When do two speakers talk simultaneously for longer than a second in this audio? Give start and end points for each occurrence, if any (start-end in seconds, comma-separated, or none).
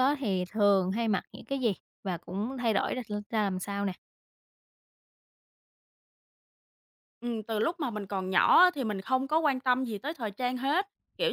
none